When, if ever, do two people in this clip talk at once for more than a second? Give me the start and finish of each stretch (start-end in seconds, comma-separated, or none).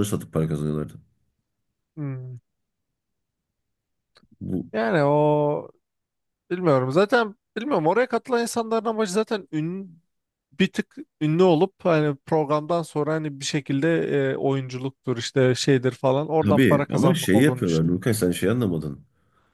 16.4-17.9